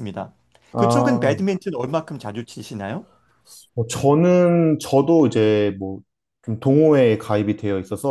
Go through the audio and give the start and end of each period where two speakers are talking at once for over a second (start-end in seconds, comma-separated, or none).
none